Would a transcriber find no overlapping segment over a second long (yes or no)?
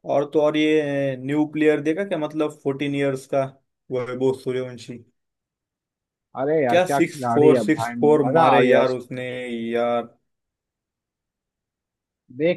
no